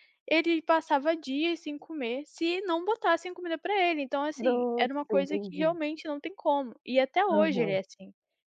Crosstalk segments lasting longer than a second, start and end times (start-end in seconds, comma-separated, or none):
4.3-5.7